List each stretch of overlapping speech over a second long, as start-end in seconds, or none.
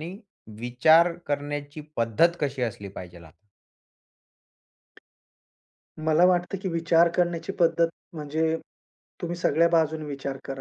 none